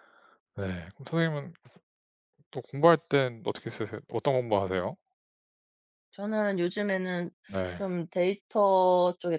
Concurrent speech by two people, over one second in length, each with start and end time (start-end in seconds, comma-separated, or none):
none